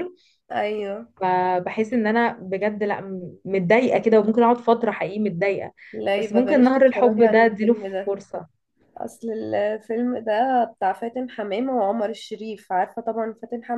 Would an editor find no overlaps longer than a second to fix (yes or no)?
no